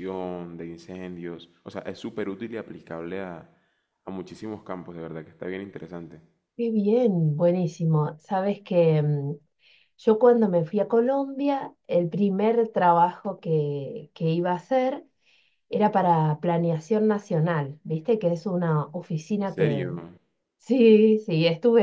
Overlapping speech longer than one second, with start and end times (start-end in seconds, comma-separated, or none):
none